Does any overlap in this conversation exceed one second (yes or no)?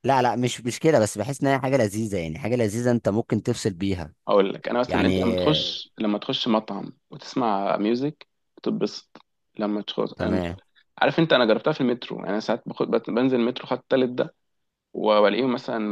no